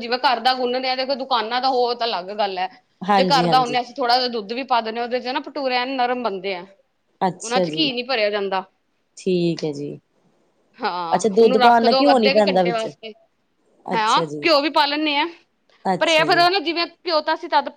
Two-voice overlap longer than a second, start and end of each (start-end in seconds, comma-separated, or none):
11.1-12.9